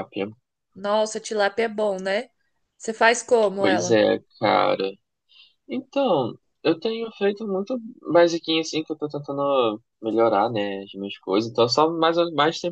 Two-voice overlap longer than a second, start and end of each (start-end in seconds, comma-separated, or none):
none